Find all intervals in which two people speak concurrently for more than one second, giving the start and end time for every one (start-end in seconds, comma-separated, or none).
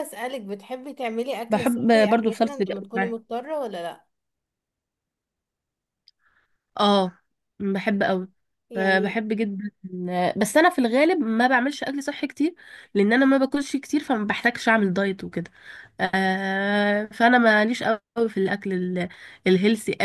1.5-3.1